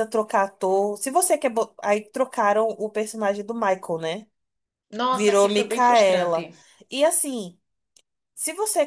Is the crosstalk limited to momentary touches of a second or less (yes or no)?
no